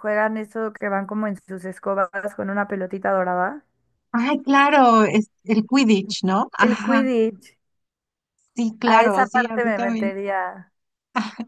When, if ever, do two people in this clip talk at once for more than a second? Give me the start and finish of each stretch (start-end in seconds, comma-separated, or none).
8.8-10.1